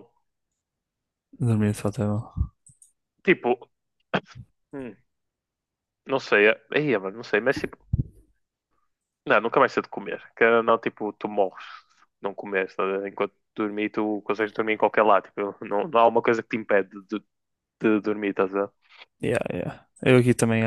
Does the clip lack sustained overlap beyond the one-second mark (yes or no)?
yes